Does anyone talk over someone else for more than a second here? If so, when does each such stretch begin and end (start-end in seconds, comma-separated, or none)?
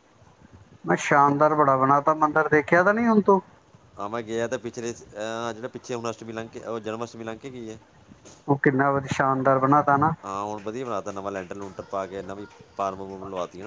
none